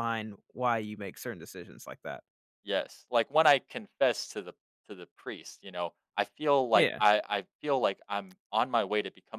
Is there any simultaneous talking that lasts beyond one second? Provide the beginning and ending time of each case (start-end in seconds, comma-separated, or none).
none